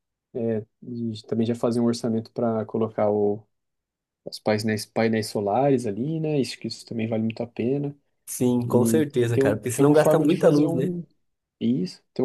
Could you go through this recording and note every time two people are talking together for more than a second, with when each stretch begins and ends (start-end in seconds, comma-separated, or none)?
8.6-10.8